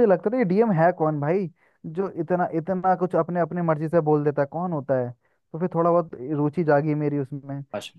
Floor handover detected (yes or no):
no